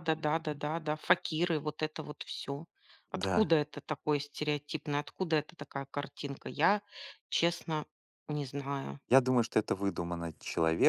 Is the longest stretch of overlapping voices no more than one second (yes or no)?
yes